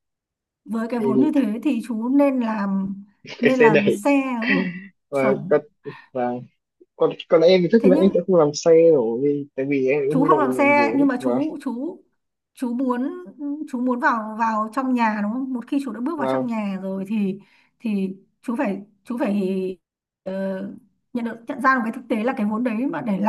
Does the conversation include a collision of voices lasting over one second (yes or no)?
yes